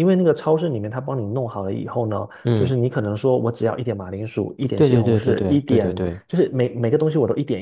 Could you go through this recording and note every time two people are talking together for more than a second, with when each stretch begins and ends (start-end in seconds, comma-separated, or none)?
4.7-6.2